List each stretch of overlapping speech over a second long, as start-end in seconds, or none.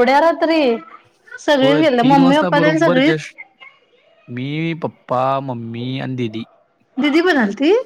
1.6-3.3